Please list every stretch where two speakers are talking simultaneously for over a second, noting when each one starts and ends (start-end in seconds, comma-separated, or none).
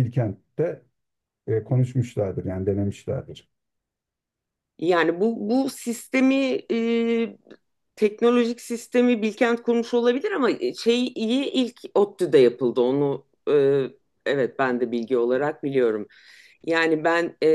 none